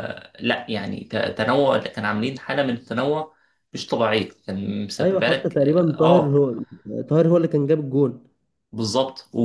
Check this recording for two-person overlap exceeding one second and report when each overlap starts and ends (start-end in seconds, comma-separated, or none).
5.0-6.4